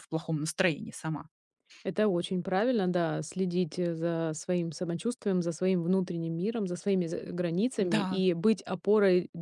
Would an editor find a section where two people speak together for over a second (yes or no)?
no